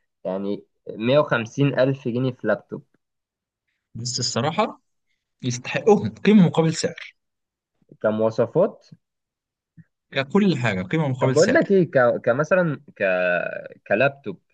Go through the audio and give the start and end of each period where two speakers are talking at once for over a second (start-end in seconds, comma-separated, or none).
none